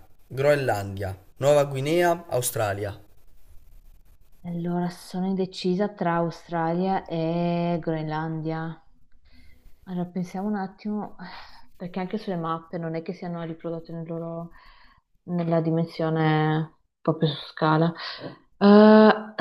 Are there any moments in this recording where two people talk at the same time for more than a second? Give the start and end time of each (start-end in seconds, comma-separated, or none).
none